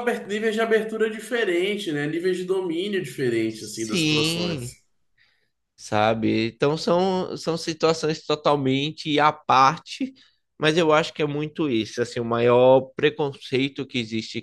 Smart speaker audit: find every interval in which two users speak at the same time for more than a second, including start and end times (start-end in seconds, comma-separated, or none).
3.5-4.7